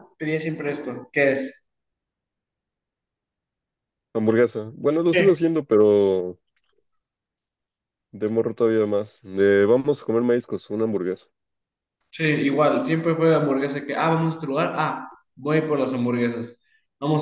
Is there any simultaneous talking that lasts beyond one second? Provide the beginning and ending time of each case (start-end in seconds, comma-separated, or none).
none